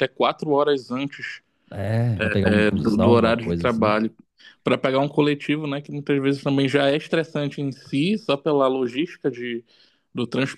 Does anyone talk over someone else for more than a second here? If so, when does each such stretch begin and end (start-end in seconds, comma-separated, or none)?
2.4-4.0